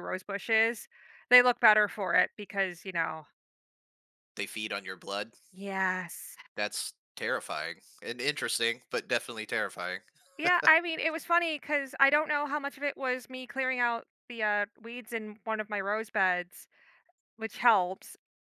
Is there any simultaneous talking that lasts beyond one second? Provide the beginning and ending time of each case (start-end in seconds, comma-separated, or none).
none